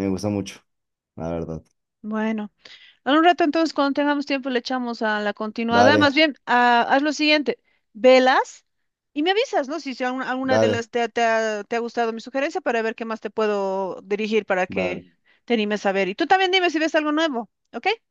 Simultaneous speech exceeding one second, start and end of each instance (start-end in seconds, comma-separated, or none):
none